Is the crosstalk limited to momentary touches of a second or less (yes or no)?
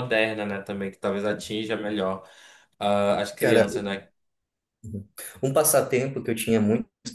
yes